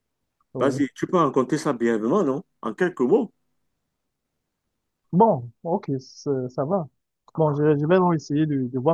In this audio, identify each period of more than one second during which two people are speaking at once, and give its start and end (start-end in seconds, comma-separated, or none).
none